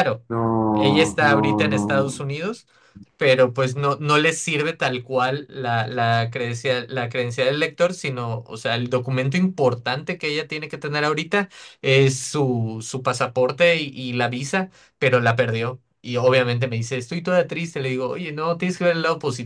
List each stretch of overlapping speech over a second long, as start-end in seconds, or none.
0.7-2.2